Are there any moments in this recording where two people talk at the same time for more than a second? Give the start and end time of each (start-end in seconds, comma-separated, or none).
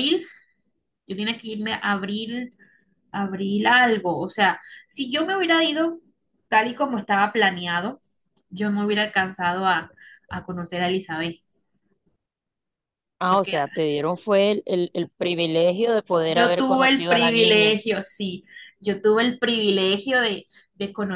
16.2-17.8